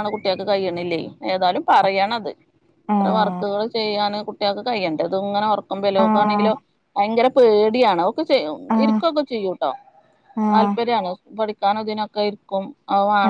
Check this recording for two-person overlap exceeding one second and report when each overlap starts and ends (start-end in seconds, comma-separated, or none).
none